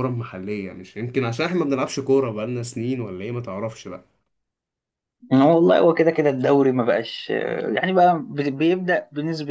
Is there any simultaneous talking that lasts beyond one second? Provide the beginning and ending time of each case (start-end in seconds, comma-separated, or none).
none